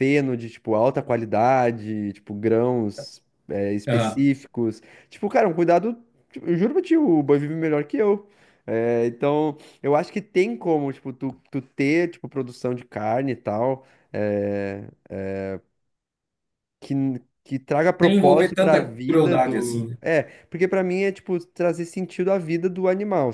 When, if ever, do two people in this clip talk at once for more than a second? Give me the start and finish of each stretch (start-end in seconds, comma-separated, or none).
18.0-20.0